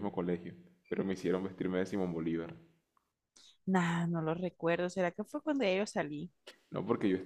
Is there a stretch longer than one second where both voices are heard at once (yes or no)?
no